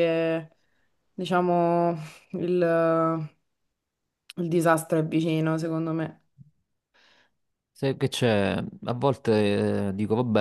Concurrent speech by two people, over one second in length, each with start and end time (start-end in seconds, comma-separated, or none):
none